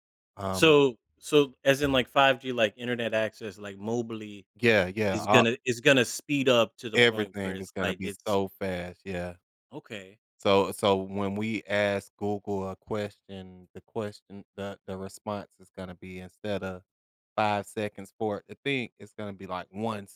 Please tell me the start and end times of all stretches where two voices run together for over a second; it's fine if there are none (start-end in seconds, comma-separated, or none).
7.0-8.4